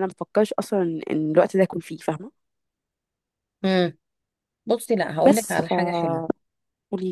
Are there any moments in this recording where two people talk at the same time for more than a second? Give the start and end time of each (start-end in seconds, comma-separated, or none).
none